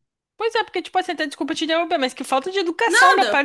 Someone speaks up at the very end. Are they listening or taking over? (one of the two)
listening